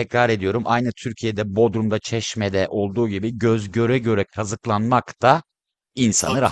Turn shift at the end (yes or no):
yes